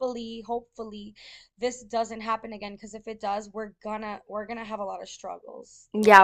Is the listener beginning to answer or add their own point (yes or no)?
yes